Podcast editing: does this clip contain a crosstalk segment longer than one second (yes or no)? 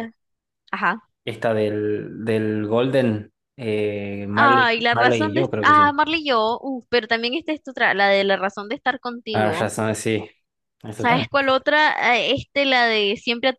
yes